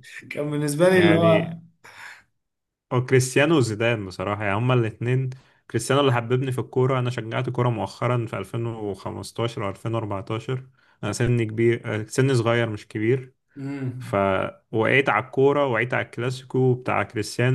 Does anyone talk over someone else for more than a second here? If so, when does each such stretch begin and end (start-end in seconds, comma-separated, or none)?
none